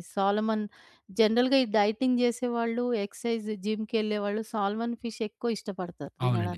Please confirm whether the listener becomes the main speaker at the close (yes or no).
yes